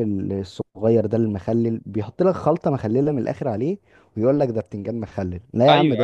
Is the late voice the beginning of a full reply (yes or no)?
yes